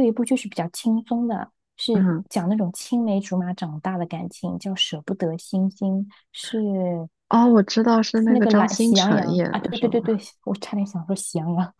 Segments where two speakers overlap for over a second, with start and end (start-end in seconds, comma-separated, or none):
8.2-10.2